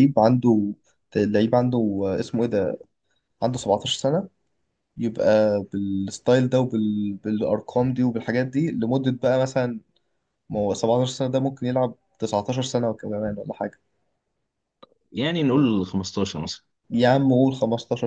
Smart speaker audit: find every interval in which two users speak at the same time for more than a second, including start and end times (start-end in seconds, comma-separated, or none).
none